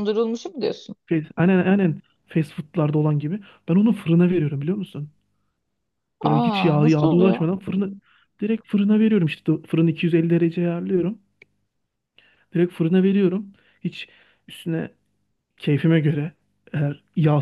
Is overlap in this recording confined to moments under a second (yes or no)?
no